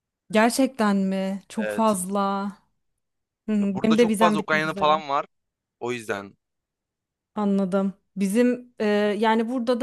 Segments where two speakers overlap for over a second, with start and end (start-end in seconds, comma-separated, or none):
3.6-5.0